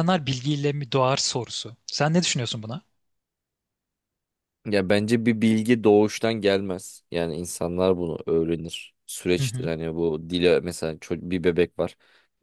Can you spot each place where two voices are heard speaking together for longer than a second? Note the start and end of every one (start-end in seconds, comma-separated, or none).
none